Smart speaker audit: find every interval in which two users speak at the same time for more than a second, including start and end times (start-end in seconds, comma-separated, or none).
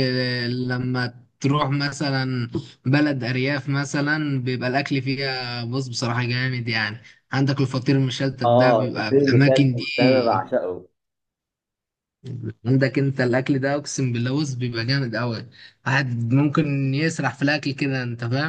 8.4-10.5